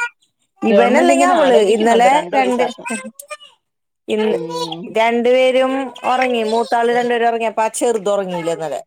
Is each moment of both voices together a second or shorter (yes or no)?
no